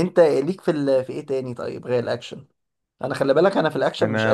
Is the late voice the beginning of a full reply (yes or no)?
yes